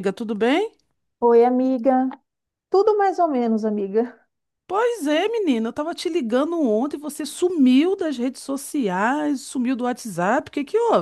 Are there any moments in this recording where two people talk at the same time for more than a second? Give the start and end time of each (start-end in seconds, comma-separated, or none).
none